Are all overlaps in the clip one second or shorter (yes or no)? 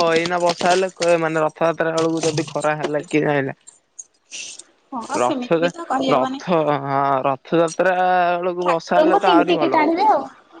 no